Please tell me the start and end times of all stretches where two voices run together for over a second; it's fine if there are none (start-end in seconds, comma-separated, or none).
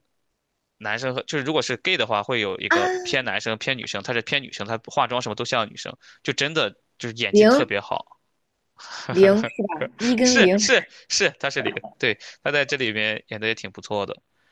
none